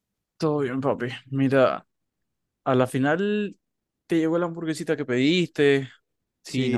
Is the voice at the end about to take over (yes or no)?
yes